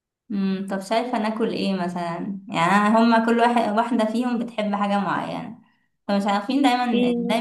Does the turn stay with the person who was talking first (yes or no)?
yes